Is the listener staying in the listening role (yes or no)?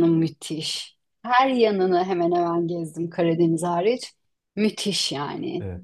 no